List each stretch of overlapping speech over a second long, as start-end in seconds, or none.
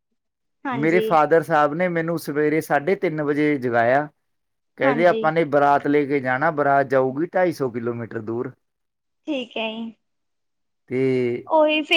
none